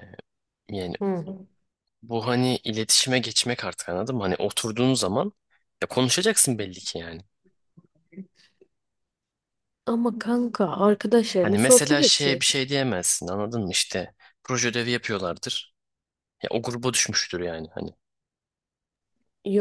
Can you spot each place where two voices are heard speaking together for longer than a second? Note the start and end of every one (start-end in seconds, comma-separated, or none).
11.4-12.6